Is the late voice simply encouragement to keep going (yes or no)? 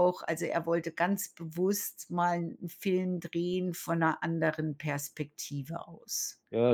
no